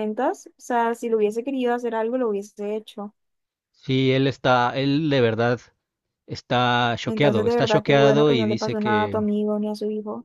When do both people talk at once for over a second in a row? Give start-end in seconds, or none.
7.1-9.2